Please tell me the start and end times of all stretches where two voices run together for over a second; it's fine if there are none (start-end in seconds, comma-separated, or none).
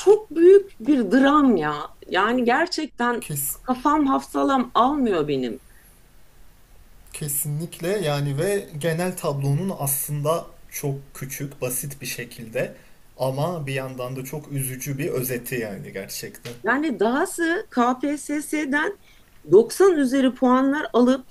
none